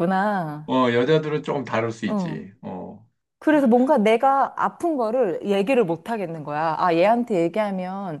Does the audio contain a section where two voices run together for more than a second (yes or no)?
no